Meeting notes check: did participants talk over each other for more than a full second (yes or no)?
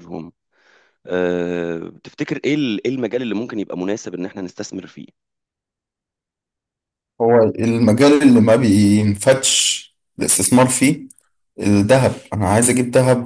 no